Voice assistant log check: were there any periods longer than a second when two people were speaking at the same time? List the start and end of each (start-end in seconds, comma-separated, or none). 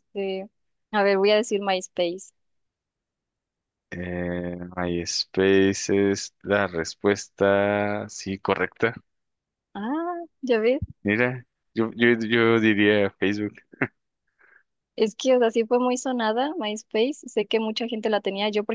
none